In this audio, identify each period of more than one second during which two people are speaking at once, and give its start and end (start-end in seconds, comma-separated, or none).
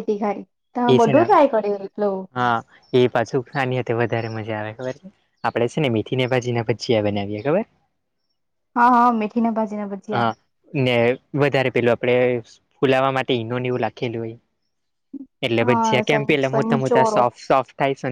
15.7-17.2